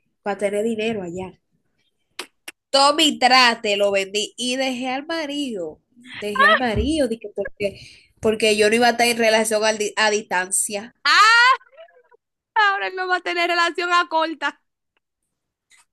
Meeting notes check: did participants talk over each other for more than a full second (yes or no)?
no